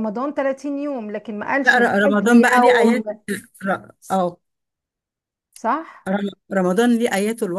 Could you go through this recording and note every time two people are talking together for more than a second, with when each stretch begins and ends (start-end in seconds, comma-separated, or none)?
1.6-3.0